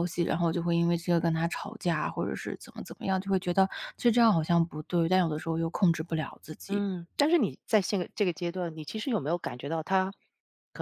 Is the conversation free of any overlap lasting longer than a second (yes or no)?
yes